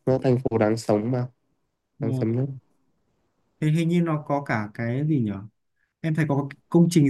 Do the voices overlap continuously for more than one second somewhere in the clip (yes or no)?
no